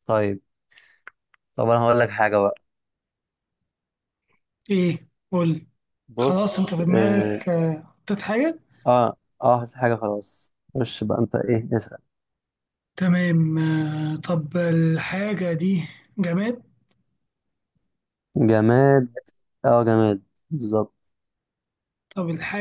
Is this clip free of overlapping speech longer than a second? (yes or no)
no